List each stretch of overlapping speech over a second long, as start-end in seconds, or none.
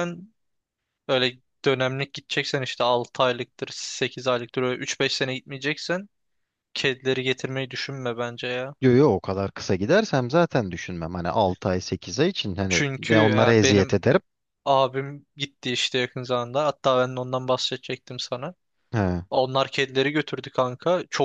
12.7-13.9